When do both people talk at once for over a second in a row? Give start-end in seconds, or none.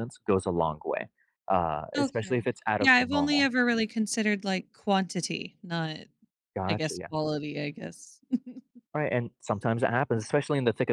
2.0-3.5